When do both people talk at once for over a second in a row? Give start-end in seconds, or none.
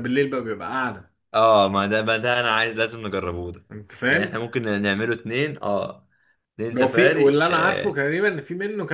6.7-8.0